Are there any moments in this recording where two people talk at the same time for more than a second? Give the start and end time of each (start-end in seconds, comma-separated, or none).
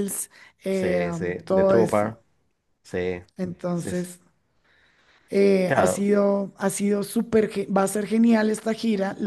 0.7-2.2